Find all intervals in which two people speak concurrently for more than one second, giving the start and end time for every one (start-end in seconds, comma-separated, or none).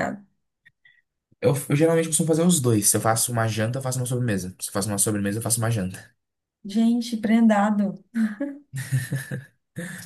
none